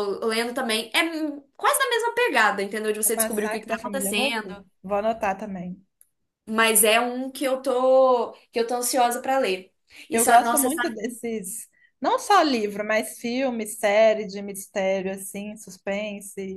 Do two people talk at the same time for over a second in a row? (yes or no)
yes